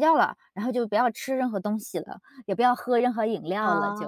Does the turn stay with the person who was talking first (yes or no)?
no